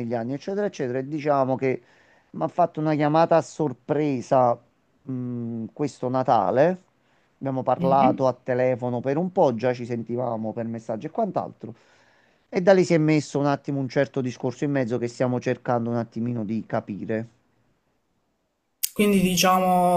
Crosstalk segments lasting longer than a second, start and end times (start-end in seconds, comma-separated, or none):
none